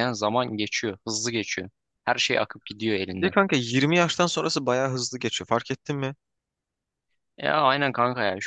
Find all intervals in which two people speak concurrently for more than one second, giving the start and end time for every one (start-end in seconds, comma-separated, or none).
none